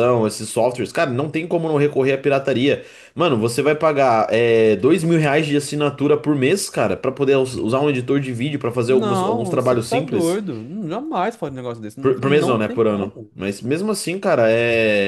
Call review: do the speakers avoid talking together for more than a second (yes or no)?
no